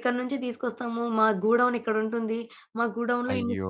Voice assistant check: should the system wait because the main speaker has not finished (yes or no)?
yes